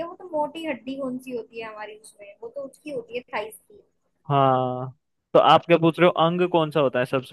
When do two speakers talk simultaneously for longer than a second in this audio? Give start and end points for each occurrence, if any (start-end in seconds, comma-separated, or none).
none